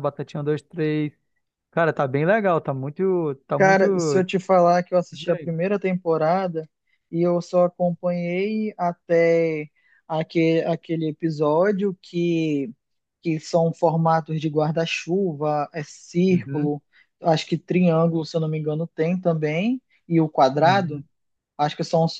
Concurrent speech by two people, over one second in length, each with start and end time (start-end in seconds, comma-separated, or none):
none